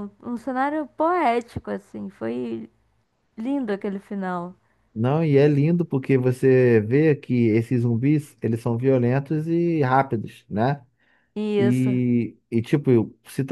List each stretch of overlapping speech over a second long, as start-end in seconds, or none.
none